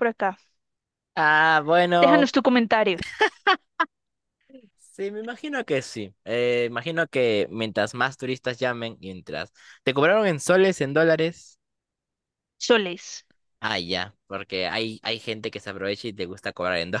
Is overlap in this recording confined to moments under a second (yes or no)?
yes